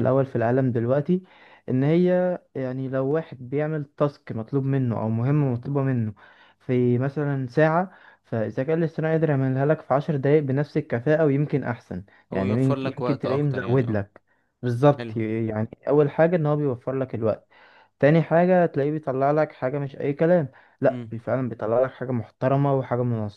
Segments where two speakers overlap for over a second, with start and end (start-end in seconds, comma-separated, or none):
12.3-14.0